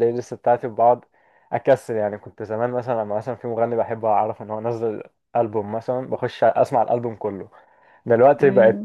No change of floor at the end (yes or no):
yes